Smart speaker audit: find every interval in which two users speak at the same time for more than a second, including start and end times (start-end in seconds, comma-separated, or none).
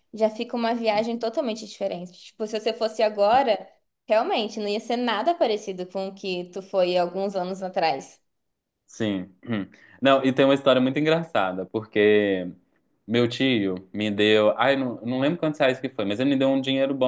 none